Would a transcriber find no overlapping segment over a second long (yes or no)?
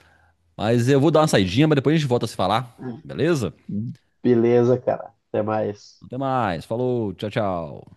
yes